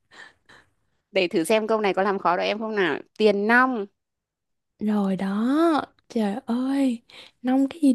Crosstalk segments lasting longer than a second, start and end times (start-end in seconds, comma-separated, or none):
none